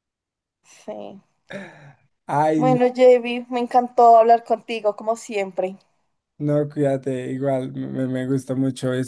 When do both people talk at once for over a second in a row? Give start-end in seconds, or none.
none